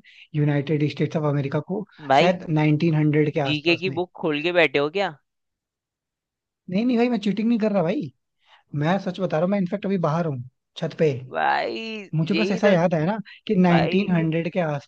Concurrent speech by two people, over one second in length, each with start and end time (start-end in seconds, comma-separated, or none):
none